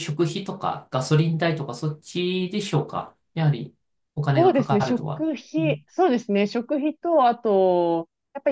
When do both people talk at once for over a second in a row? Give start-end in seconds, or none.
4.3-5.8